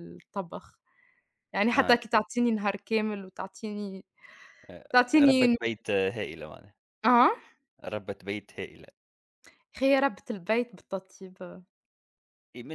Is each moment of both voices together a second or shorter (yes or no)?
yes